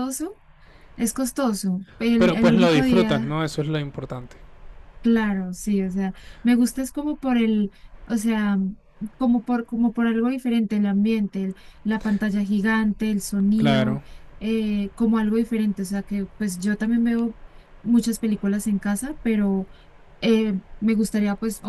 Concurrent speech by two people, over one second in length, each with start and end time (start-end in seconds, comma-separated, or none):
2.2-3.4